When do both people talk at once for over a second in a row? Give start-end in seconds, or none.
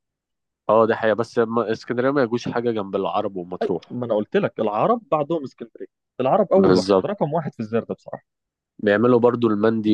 none